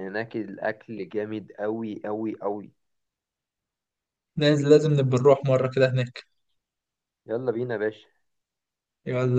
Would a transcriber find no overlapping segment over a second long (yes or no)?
yes